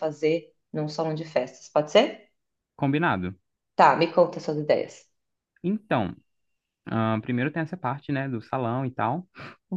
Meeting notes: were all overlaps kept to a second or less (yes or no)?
yes